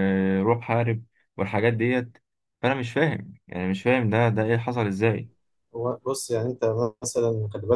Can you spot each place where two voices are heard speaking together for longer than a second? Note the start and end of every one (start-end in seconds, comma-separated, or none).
none